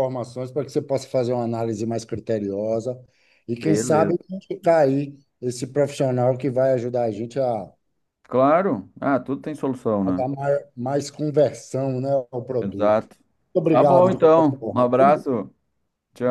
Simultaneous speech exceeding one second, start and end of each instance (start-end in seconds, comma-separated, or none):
13.7-15.2